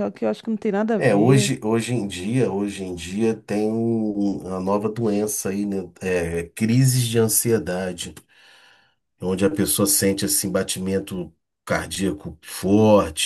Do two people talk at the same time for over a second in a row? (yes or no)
no